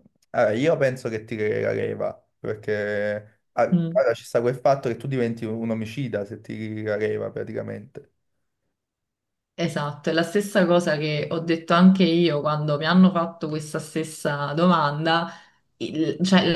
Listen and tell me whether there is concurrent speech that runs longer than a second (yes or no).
no